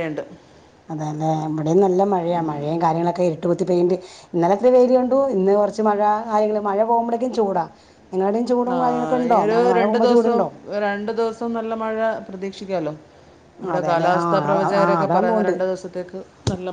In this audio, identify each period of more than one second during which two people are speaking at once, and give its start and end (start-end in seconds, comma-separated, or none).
13.7-15.6